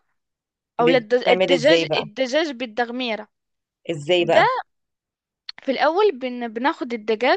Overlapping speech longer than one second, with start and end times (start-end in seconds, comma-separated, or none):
0.8-2.0